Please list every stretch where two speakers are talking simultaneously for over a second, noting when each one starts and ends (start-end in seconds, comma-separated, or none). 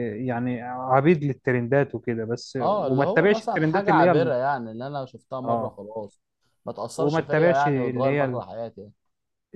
2.6-4.3, 7.0-8.4